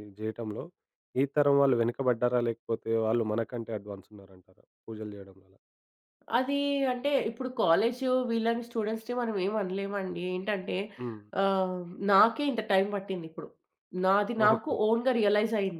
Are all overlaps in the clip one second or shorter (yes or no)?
yes